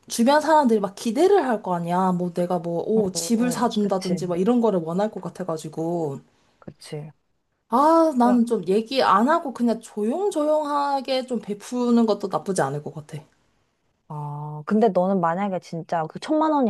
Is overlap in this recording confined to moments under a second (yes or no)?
no